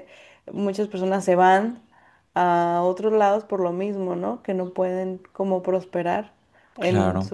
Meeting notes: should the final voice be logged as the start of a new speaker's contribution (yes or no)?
yes